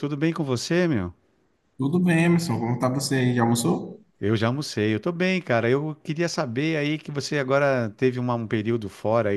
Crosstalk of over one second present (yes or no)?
no